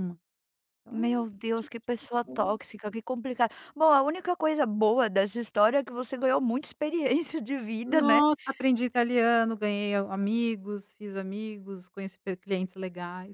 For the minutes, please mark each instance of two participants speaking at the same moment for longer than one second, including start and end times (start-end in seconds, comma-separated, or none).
0.9-2.5